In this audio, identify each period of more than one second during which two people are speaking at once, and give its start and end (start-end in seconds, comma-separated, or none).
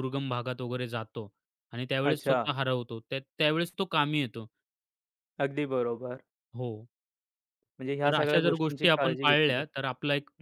8.0-9.9